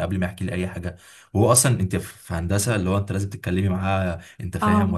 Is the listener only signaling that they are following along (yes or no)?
yes